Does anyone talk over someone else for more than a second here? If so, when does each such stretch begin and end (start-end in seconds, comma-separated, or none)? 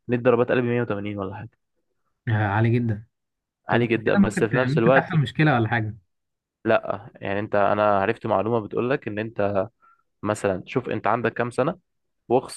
3.7-5.1